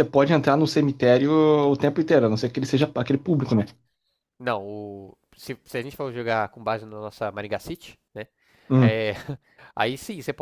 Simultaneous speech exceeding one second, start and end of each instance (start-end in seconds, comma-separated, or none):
none